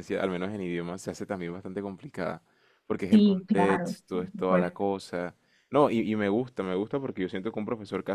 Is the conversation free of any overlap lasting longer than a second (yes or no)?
no